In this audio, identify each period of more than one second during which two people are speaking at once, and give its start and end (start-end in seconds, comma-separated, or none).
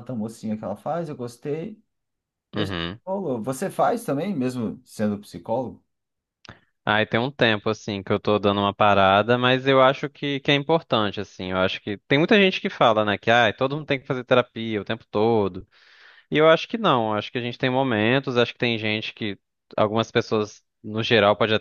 none